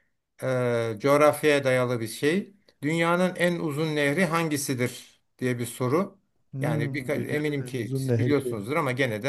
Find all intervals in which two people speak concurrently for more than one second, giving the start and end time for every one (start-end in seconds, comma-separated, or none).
6.6-8.6